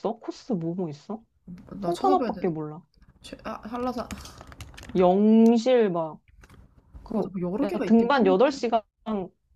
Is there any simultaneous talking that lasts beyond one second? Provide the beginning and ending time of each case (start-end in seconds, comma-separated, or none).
7.1-8.7